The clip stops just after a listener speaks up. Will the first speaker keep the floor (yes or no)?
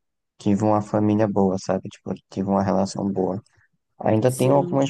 yes